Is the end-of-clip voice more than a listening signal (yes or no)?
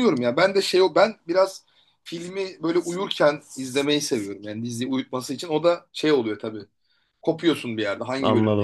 yes